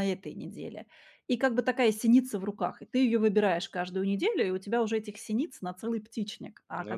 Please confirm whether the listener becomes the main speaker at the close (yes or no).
no